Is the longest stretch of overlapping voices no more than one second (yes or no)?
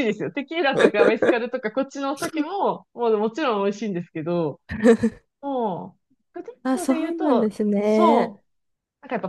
no